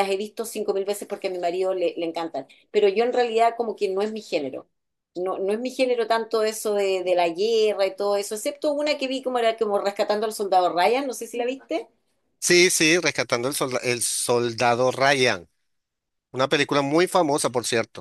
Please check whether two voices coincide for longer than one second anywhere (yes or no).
no